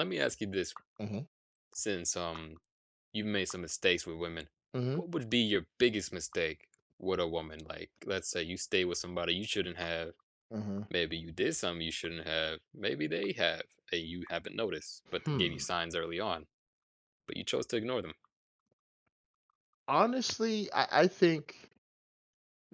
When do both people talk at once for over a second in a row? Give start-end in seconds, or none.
none